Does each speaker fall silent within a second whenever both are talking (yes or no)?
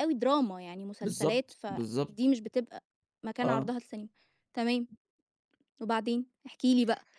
no